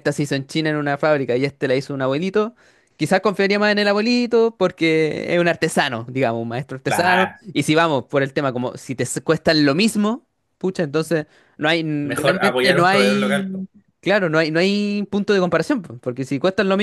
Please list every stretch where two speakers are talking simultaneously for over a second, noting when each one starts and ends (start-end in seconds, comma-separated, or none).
12.0-13.7